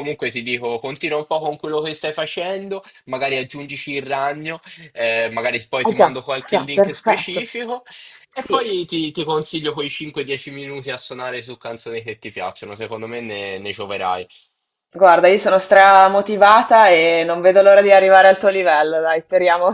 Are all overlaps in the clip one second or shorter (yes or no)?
no